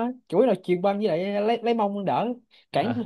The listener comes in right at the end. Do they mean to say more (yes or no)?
yes